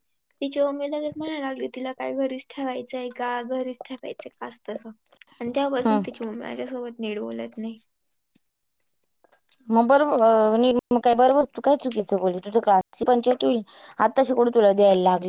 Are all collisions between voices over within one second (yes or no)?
yes